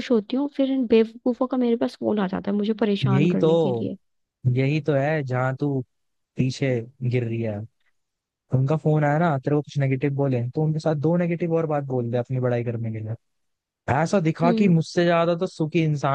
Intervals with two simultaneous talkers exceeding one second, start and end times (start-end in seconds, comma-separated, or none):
none